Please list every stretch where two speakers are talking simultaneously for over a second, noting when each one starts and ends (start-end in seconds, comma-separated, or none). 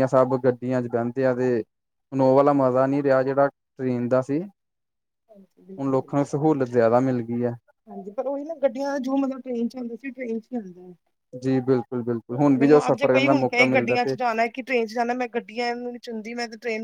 12.6-14.1